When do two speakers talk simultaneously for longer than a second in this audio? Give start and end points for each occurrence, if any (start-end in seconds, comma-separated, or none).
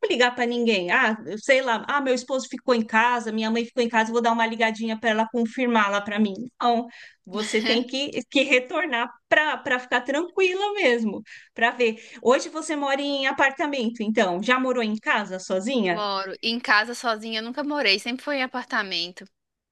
none